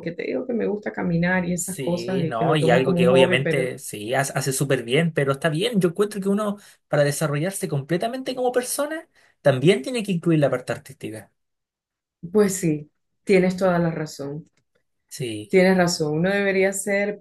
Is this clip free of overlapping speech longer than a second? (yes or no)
no